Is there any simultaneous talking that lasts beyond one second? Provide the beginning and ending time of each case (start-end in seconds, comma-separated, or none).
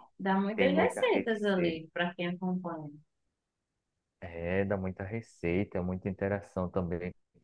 0.6-1.8